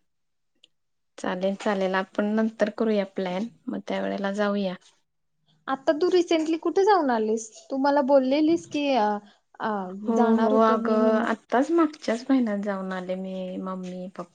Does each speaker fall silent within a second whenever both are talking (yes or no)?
yes